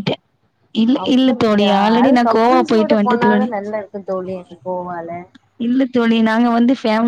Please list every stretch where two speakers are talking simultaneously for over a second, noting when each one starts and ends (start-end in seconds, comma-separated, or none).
1.1-3.5